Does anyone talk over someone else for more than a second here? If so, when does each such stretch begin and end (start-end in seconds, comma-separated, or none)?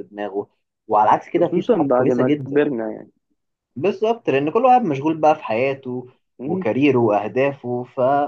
1.3-2.6